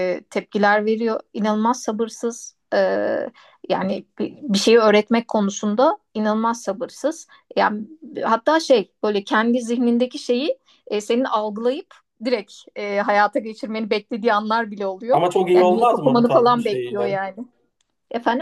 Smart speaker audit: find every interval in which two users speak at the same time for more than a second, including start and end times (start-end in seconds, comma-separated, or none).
15.1-17.2